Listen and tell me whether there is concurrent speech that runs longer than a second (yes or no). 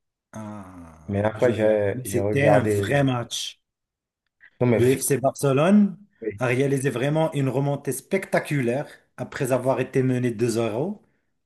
yes